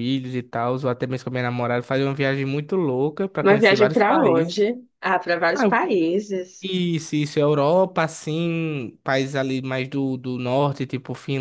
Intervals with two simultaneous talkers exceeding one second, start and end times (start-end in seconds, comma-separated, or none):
3.4-4.7